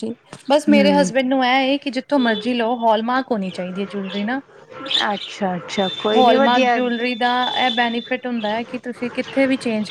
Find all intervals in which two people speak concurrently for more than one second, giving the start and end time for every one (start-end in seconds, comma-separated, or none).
none